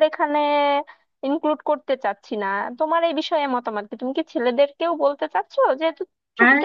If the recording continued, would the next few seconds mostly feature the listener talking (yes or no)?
yes